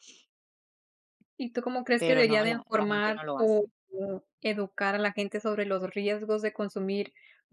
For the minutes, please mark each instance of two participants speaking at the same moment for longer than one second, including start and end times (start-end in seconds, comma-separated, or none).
2.0-3.7